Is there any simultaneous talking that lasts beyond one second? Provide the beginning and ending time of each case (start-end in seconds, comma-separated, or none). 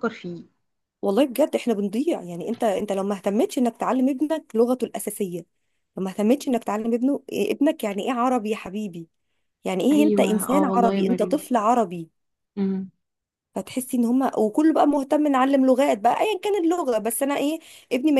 9.9-11.4